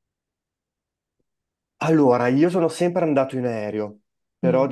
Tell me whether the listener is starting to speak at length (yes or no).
no